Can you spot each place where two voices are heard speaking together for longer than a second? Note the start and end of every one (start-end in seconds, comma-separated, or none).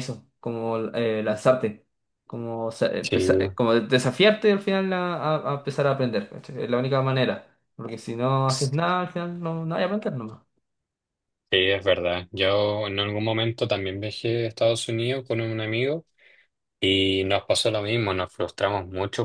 none